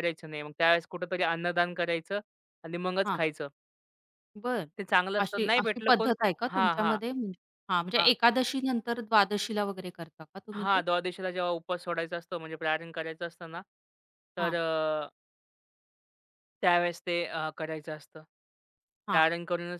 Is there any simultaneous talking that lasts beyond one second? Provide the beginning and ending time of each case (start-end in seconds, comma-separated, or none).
5.2-7.0